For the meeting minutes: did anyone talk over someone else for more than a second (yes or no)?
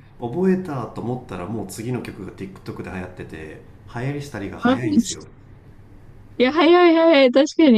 no